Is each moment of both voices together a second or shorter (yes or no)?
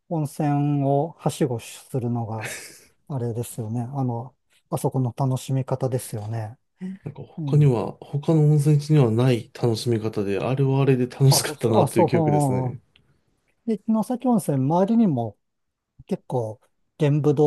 no